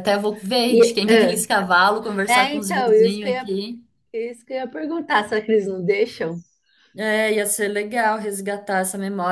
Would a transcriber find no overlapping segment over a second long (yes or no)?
no